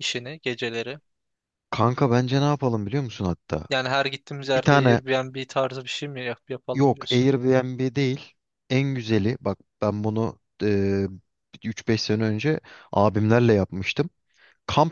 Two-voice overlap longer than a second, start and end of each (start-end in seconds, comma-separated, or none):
none